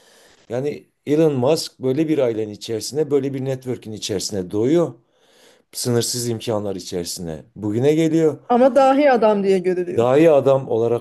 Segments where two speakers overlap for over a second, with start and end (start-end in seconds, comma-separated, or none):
none